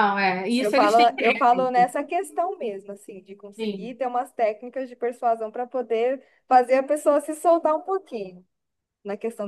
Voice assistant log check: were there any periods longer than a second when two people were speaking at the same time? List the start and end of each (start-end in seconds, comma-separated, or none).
0.6-1.9